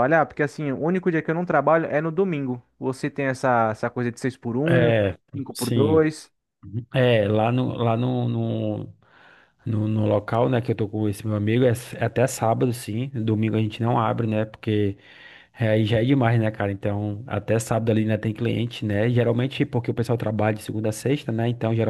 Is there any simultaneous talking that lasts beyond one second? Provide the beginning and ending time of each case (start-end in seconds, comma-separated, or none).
none